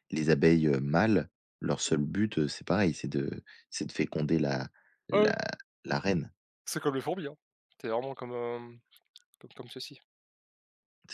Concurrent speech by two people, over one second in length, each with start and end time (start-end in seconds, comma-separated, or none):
none